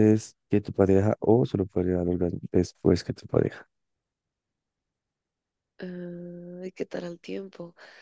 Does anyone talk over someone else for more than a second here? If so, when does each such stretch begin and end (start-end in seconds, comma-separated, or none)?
none